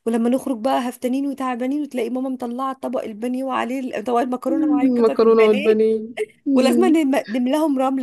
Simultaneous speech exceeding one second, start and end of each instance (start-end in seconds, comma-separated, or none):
4.5-5.8